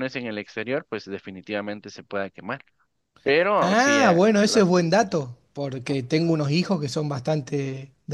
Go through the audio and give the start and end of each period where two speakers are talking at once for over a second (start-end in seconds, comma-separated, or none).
3.6-5.2